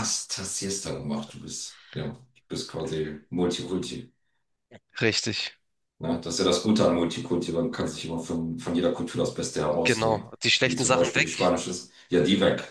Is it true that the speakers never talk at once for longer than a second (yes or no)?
no